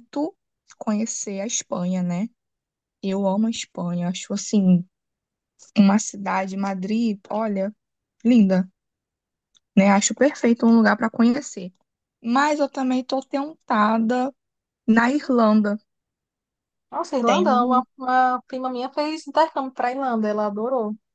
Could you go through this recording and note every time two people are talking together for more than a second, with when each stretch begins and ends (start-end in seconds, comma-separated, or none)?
none